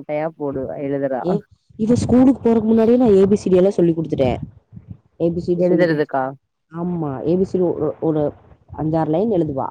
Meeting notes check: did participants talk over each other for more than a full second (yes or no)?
no